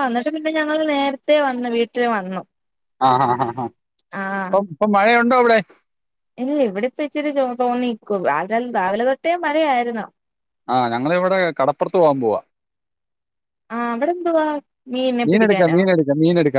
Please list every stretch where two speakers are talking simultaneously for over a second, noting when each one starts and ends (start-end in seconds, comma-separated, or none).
none